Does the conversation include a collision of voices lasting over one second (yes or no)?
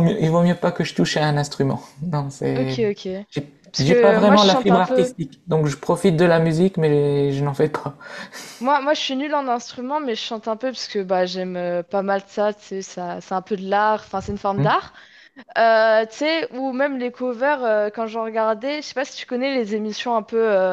yes